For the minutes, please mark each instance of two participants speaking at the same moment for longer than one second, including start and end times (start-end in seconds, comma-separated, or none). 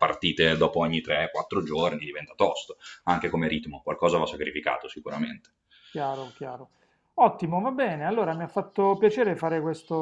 none